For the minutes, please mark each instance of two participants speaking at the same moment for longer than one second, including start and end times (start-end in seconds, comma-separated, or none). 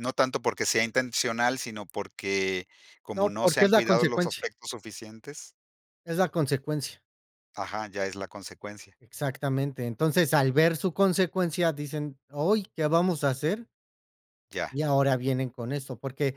3.1-4.5